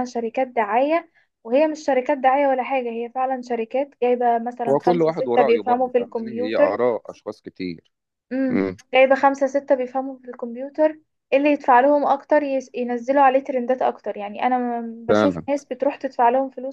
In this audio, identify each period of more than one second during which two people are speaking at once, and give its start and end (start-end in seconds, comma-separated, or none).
4.7-6.8